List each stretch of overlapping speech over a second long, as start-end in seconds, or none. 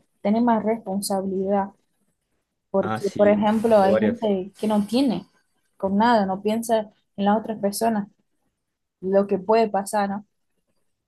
2.8-4.3